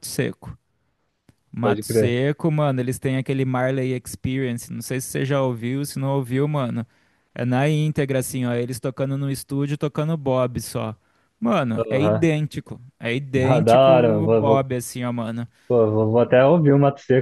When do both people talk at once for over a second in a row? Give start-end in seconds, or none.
13.3-14.7